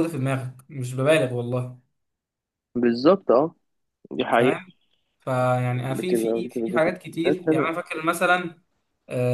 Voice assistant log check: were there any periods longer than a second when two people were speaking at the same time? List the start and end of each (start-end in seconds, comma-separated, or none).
5.9-7.7